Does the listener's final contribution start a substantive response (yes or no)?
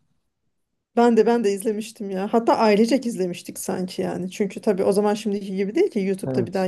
no